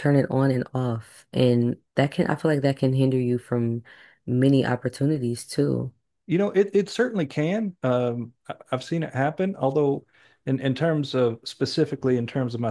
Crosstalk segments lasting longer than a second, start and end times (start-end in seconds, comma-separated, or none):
none